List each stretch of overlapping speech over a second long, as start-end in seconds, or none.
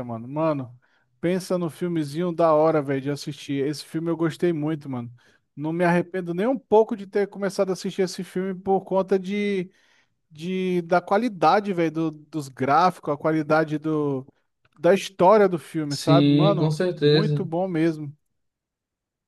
15.9-17.5